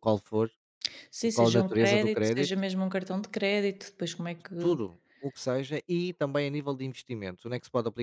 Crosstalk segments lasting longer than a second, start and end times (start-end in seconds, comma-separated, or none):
1.3-2.6